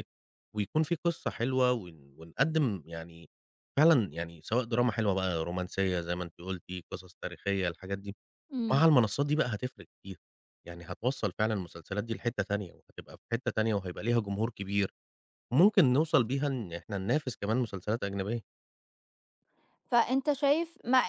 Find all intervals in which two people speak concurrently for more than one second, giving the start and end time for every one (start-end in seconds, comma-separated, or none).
none